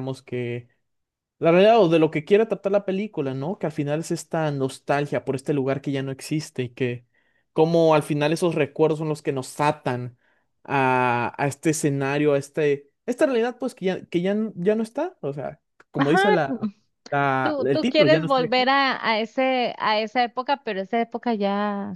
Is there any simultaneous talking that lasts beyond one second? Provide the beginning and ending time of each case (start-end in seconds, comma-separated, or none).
17.4-18.7